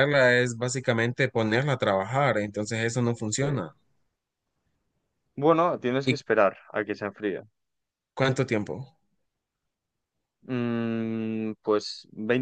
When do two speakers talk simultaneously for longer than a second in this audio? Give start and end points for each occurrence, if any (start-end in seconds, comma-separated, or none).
none